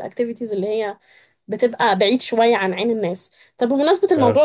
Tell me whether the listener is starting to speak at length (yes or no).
no